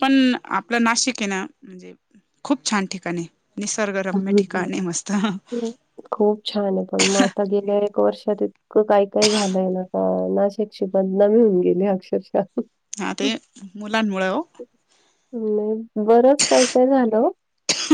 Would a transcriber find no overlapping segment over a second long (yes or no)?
yes